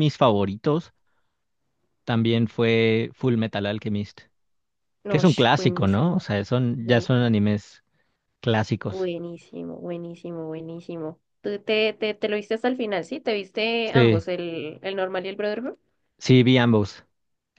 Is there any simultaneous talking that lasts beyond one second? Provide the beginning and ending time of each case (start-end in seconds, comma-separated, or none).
5.1-6.3